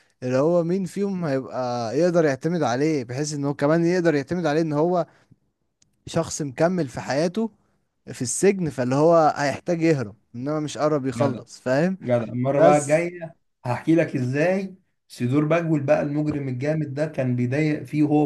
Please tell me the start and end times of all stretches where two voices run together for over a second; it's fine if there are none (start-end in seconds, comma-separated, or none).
none